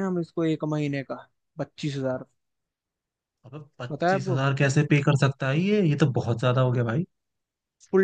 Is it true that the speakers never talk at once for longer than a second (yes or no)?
yes